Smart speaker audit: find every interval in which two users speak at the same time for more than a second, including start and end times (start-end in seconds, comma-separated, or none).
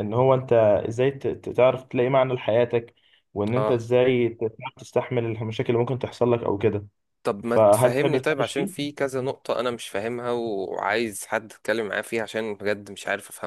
7.5-8.8